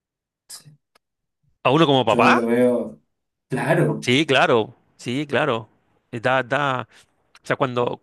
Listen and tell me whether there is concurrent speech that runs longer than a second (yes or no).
no